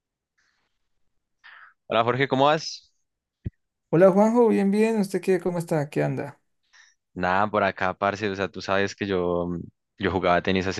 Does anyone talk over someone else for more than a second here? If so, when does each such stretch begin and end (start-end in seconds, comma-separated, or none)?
none